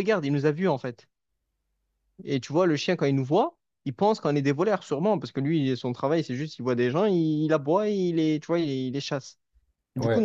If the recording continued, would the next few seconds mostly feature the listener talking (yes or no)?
no